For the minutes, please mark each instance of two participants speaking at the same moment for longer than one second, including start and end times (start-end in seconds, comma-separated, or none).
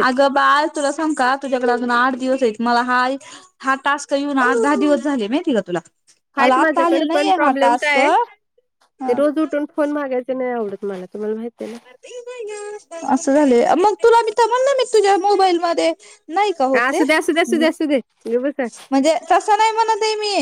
6.4-8.0